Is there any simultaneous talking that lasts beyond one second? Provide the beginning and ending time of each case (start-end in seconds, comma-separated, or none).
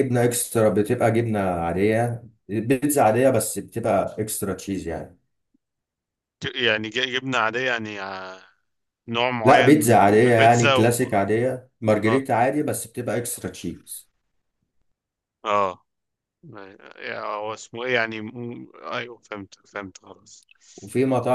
9.4-11.2